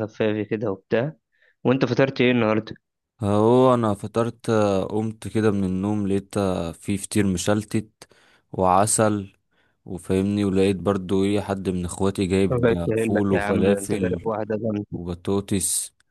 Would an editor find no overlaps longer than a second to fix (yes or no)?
no